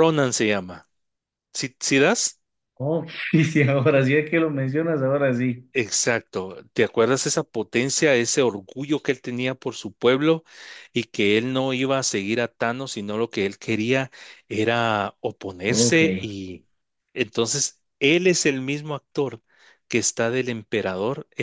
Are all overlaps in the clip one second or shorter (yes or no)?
yes